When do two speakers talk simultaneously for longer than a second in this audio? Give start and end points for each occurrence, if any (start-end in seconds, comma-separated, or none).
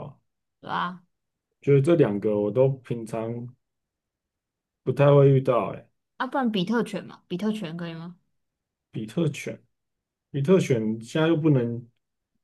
none